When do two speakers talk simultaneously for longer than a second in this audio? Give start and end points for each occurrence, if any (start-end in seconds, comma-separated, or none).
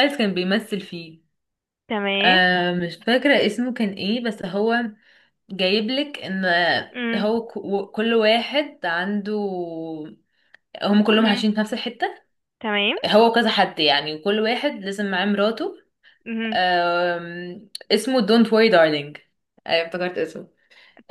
none